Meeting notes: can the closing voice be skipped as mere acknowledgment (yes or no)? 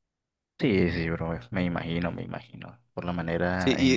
yes